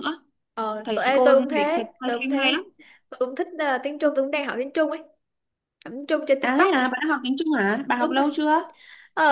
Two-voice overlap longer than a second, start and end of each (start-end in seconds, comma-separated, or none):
0.8-2.5